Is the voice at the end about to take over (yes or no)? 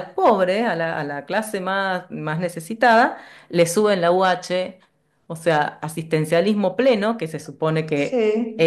no